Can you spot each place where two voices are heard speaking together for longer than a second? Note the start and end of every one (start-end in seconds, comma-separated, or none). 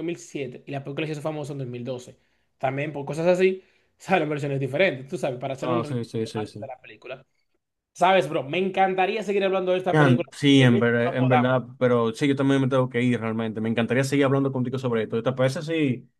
9.9-11.5